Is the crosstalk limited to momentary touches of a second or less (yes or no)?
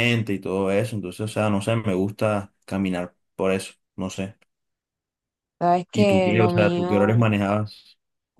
no